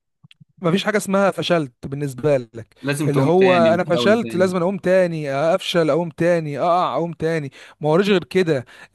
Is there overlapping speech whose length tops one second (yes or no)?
yes